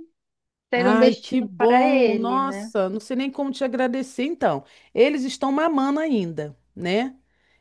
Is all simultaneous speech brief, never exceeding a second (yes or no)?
no